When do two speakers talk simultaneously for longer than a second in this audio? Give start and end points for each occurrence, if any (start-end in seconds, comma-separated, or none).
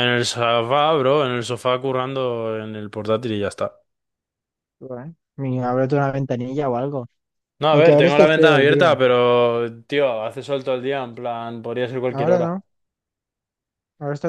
7.7-9.0